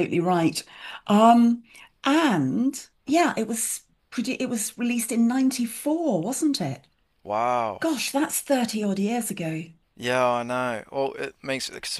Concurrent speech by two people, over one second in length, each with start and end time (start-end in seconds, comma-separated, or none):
none